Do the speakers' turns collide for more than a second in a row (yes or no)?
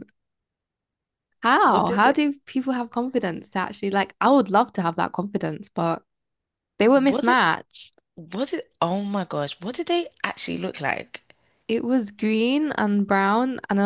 no